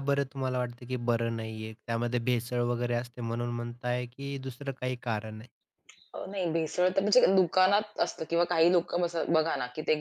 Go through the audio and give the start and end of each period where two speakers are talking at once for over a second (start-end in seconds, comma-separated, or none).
none